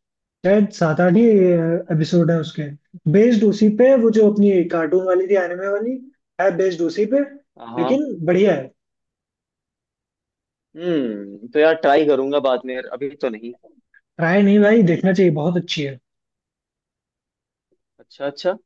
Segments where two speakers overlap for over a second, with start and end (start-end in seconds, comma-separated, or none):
none